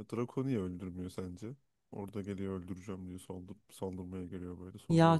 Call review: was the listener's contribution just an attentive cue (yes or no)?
no